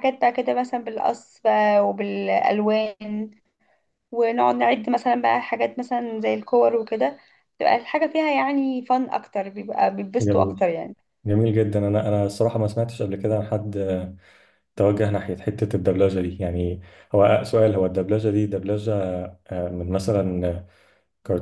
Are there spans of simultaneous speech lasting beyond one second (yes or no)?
no